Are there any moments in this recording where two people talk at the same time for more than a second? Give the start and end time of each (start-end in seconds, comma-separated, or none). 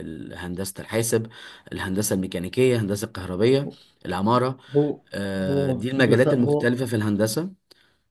5.4-6.7